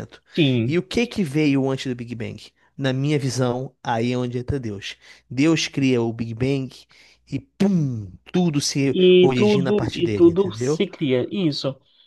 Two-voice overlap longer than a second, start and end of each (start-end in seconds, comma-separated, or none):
8.9-10.8